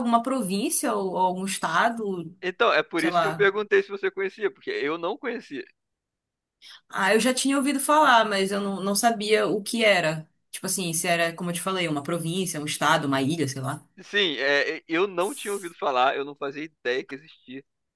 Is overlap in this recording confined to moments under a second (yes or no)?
yes